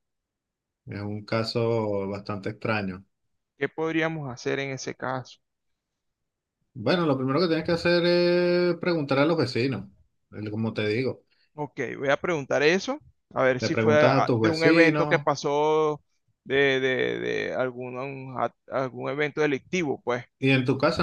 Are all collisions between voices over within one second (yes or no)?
no